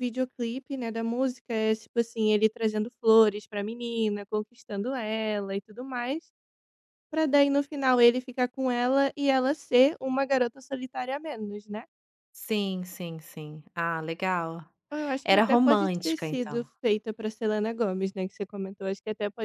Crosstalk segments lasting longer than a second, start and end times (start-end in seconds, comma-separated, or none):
15.2-16.7